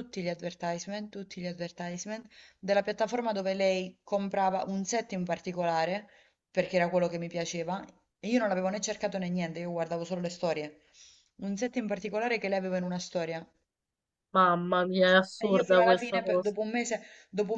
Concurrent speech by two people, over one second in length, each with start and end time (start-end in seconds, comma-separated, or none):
15.1-16.5